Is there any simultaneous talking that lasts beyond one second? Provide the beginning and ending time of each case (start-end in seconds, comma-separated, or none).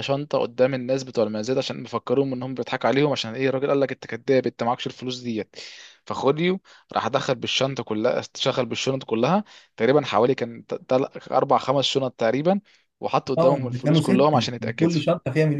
13.4-14.9